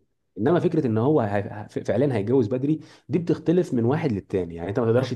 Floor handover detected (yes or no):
no